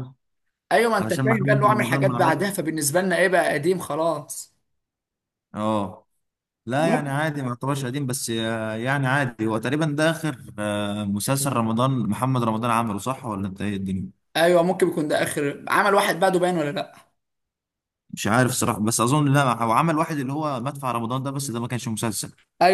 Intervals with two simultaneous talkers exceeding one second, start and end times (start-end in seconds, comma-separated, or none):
1.0-2.4